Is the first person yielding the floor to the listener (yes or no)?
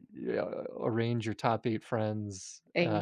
no